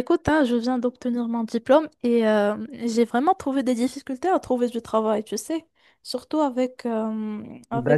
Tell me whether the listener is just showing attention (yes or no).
yes